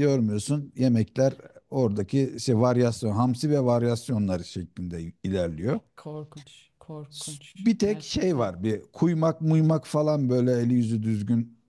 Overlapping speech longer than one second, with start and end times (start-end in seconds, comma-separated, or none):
7.1-8.6